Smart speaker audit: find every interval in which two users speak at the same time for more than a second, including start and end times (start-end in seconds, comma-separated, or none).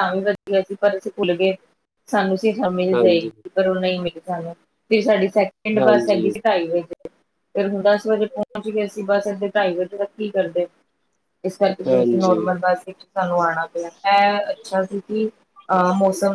none